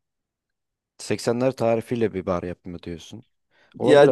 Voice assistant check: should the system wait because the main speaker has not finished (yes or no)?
no